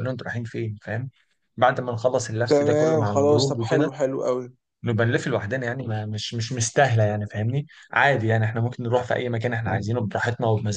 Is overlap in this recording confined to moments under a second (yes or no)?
no